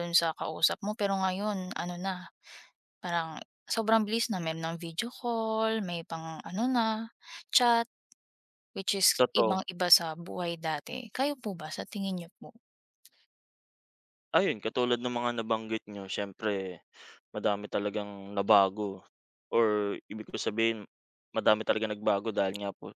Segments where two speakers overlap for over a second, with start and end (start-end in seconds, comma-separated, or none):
none